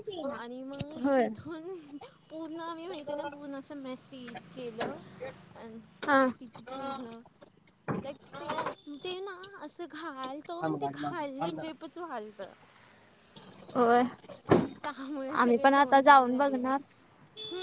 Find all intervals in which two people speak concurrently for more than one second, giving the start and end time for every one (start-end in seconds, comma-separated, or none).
15.3-16.7